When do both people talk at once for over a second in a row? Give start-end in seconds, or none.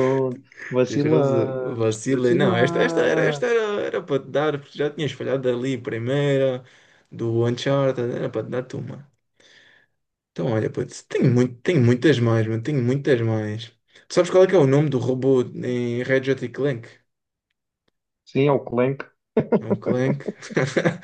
0.9-3.6